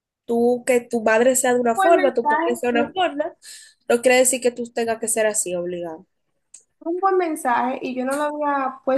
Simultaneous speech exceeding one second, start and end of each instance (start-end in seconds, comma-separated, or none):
1.8-3.0